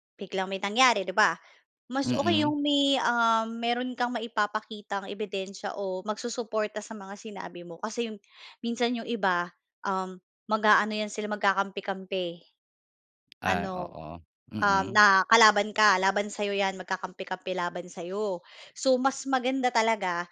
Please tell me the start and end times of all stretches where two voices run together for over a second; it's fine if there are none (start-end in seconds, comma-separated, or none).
none